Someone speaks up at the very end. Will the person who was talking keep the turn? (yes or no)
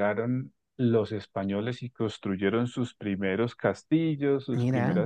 yes